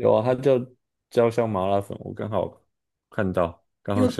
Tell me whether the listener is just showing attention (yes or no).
no